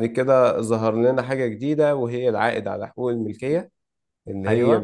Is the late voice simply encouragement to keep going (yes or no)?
yes